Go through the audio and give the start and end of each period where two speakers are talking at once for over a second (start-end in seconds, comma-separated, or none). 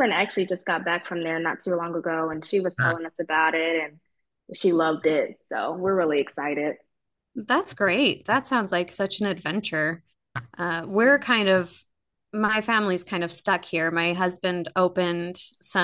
none